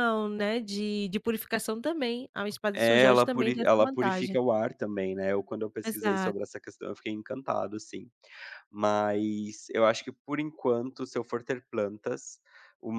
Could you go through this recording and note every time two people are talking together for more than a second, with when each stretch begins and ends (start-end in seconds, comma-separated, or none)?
2.7-4.4